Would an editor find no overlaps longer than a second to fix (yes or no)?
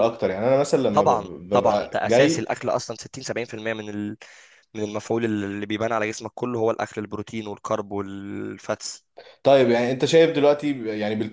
no